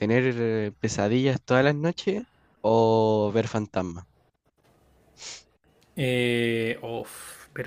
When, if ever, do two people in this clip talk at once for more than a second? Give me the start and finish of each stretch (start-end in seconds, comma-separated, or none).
none